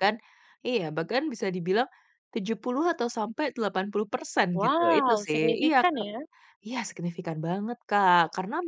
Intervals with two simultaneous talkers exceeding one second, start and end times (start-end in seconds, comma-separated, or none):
4.6-6.1